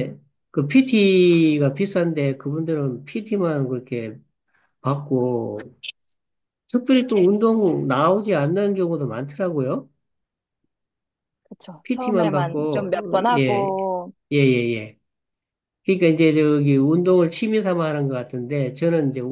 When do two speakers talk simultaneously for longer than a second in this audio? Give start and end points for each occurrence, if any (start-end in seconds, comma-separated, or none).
11.8-13.8